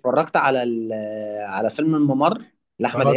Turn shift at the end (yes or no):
yes